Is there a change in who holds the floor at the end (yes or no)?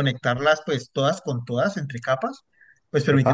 no